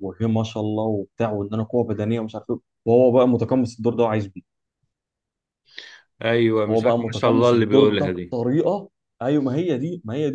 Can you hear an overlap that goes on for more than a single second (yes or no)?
yes